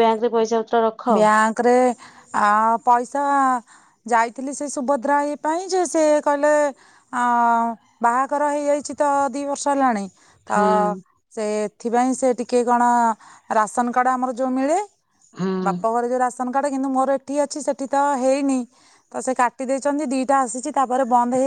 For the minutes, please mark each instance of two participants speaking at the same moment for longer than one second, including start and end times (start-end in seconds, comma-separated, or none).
none